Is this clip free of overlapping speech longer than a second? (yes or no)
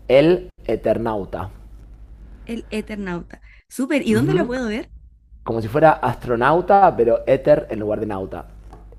yes